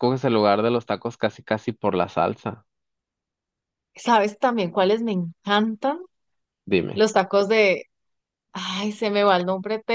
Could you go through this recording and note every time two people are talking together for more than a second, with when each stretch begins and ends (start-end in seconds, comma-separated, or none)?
none